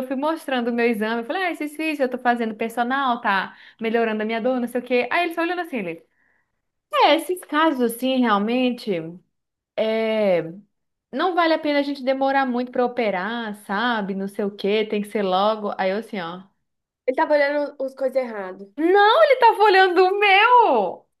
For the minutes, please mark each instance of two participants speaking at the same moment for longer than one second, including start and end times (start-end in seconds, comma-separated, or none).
none